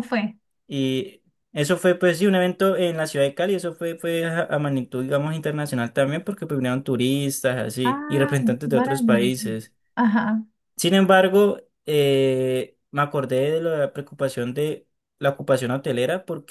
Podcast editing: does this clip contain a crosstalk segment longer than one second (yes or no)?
yes